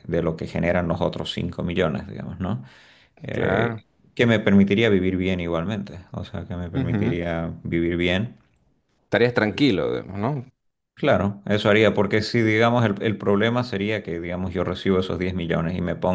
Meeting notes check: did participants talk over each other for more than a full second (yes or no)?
no